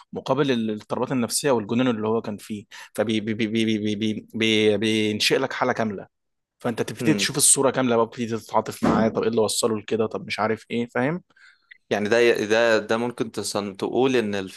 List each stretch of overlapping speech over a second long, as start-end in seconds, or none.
none